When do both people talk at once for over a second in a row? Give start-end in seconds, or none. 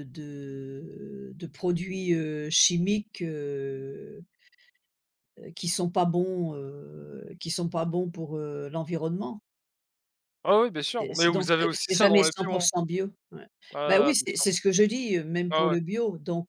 11.0-12.7